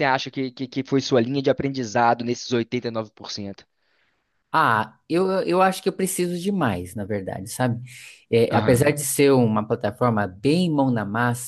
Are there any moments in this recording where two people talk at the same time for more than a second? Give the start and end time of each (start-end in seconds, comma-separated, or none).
none